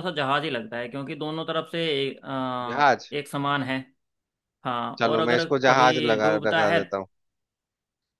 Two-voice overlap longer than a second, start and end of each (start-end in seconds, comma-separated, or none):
5.0-6.8